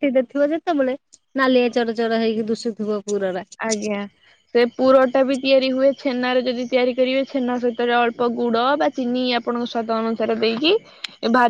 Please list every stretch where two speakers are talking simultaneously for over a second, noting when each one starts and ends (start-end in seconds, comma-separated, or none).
none